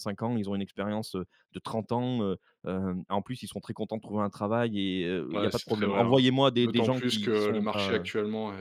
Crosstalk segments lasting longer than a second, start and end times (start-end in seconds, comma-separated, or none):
5.3-8.1